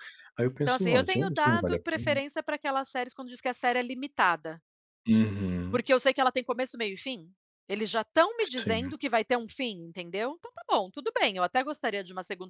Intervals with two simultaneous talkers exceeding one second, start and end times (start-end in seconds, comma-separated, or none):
0.6-2.0